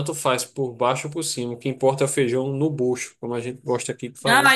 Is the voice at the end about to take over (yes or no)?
yes